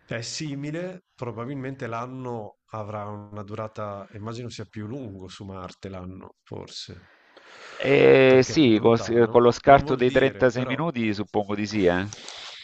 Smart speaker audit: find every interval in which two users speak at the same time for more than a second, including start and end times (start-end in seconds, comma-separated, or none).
8.2-10.9